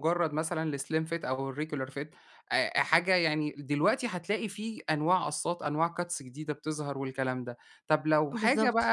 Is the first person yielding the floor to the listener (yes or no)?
no